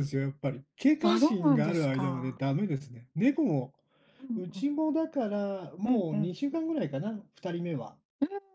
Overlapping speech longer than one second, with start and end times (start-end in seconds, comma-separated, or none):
1.0-2.4